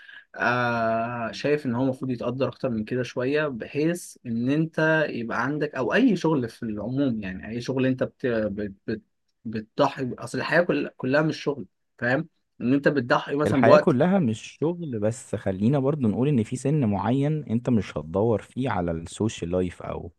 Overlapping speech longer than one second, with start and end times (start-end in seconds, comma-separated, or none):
none